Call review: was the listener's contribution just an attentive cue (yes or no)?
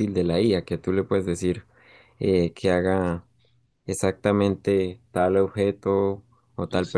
yes